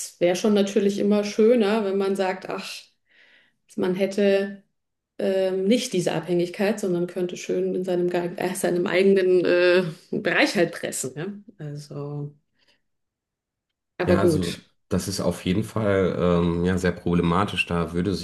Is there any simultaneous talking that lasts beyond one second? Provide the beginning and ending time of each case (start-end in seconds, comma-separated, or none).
none